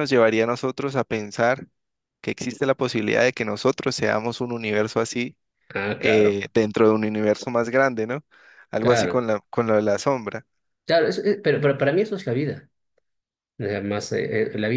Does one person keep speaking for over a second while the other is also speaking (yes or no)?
no